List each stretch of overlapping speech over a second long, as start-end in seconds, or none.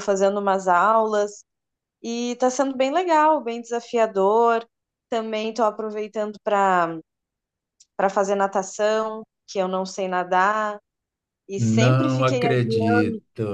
11.6-13.0